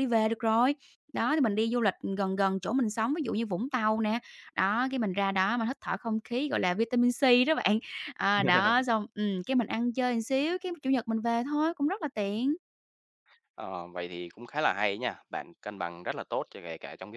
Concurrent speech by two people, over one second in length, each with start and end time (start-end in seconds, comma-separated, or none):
none